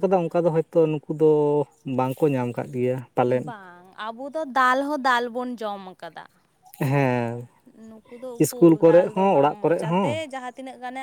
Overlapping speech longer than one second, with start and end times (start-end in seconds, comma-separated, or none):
8.4-10.2